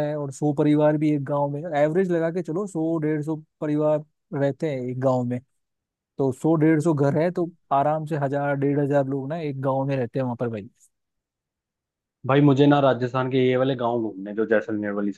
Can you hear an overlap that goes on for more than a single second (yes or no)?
no